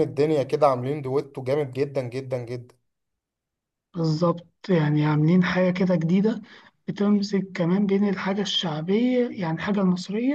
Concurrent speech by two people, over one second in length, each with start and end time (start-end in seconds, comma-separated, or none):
none